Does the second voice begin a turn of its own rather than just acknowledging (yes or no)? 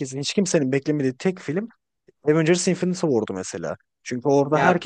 no